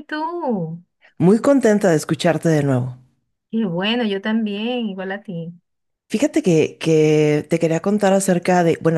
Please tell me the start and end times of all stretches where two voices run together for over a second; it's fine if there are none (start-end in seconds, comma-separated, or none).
none